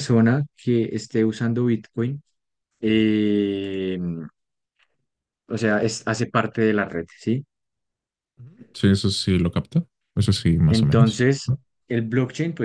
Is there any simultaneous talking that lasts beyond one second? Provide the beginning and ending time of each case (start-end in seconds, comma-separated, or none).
none